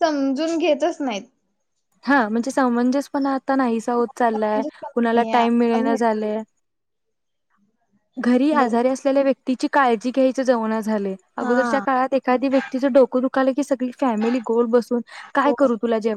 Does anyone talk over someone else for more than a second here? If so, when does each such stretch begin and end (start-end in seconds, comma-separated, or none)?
4.0-6.3